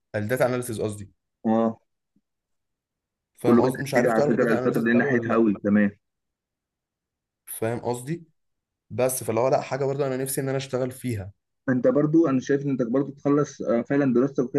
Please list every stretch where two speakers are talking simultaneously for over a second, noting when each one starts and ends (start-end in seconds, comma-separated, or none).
3.5-5.5